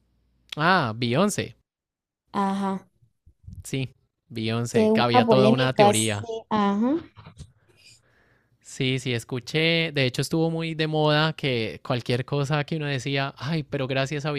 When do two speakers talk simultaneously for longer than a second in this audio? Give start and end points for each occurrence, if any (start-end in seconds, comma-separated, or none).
4.7-6.3